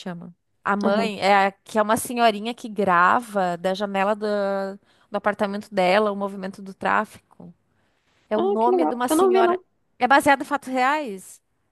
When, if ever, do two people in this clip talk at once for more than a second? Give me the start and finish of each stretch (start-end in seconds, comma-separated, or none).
8.3-9.6